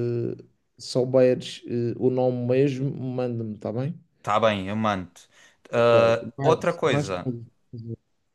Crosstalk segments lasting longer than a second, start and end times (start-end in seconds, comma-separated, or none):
5.7-7.3